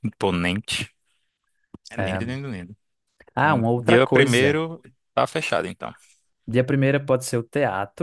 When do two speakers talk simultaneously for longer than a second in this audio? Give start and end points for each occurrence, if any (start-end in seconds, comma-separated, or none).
3.4-4.6